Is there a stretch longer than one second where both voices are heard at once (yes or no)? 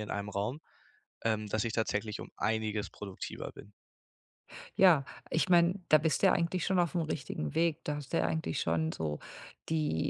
no